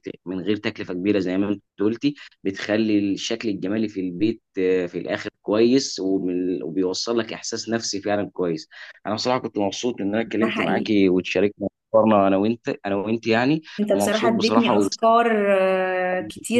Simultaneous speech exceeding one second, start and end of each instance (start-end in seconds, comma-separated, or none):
13.8-15.2